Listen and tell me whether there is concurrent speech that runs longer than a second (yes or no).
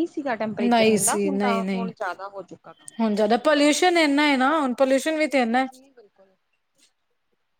yes